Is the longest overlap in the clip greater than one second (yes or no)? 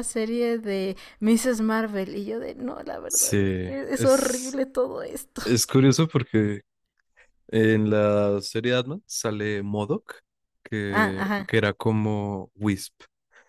yes